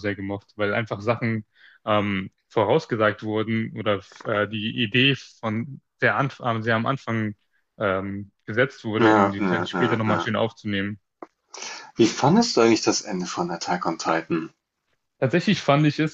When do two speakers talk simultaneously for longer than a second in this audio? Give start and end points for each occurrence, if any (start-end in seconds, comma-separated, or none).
9.0-10.3